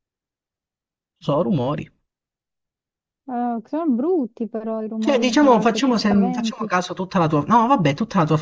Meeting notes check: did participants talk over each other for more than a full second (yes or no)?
yes